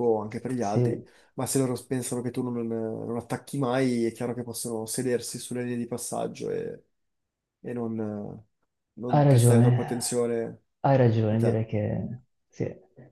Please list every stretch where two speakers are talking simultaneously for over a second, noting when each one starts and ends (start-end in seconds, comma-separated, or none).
none